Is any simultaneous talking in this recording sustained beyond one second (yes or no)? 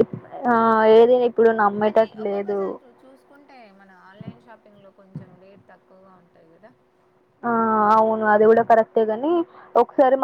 no